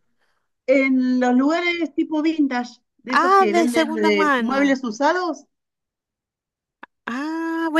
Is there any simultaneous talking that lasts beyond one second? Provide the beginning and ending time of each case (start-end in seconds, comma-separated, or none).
3.1-4.8